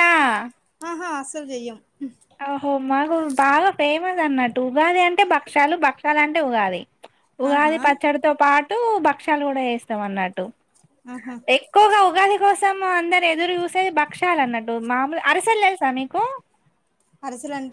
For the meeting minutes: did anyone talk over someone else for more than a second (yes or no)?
no